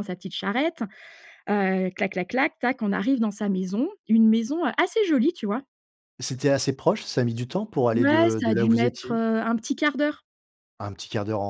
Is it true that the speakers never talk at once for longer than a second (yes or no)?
no